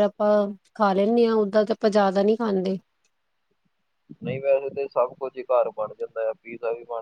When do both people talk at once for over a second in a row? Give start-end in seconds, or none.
none